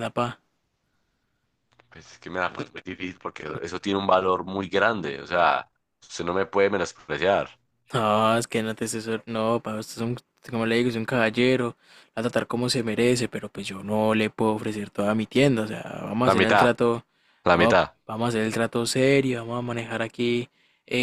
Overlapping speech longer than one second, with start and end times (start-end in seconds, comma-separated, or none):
none